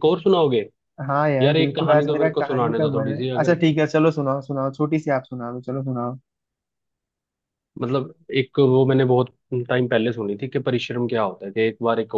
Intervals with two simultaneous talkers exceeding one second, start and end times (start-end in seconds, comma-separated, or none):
1.4-3.6